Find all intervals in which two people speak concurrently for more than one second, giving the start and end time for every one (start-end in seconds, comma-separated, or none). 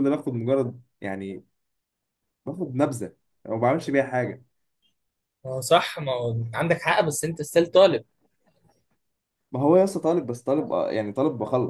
none